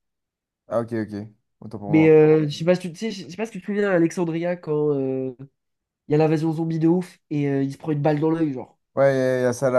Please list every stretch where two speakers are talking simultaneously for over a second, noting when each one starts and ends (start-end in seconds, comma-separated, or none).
none